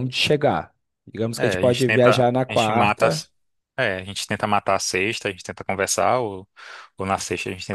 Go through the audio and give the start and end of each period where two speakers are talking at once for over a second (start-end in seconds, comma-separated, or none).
1.4-3.3